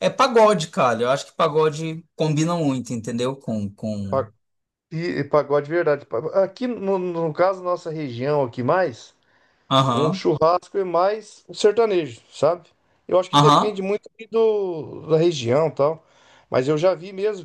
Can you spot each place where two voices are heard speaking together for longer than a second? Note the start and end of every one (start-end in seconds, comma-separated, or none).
none